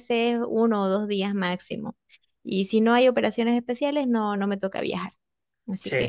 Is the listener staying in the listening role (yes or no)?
no